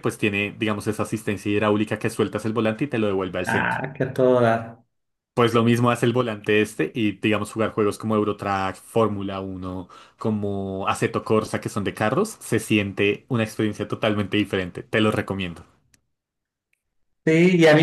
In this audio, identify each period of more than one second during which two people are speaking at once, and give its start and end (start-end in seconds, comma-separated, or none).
none